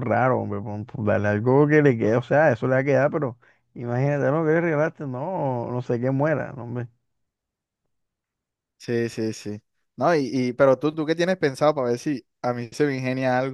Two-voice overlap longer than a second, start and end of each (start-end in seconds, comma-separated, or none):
none